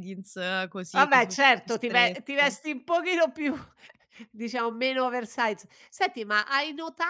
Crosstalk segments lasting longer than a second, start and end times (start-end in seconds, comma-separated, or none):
0.9-2.5